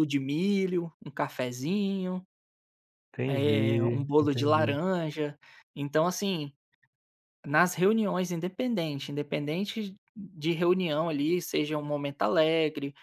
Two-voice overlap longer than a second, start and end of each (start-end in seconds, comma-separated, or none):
3.2-4.8